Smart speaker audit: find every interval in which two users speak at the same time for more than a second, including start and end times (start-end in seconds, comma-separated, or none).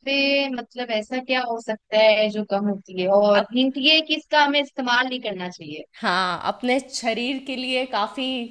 none